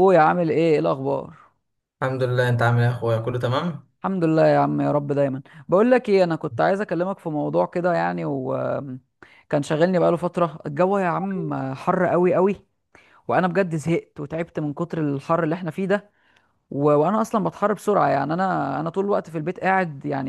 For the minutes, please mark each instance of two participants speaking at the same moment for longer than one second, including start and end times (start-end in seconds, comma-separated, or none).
none